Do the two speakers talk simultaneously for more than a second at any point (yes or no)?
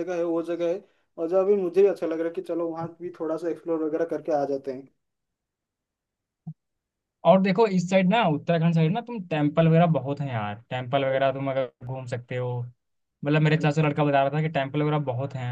no